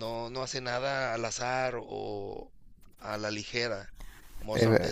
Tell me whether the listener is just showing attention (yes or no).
yes